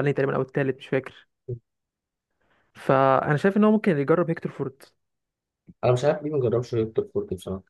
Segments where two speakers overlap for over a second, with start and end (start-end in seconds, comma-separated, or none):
none